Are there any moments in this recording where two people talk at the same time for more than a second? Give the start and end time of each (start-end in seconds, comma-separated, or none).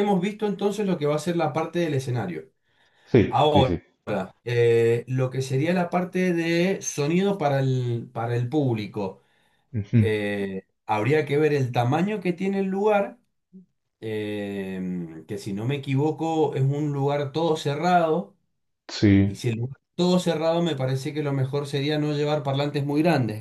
none